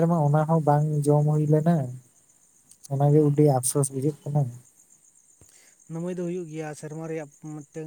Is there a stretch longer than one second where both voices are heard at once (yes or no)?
no